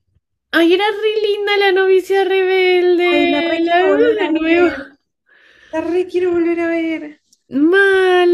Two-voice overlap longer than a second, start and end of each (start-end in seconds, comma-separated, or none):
3.1-4.8